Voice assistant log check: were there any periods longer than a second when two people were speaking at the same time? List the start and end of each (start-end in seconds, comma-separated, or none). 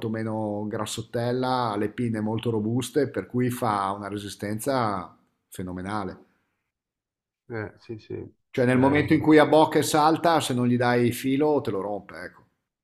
none